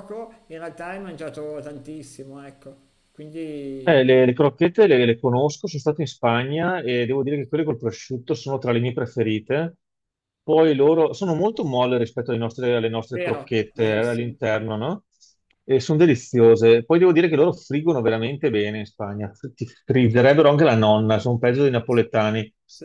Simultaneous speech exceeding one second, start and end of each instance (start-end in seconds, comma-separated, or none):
13.1-14.4